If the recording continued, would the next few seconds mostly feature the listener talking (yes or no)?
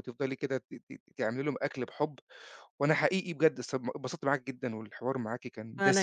no